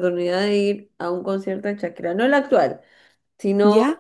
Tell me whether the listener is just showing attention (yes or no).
yes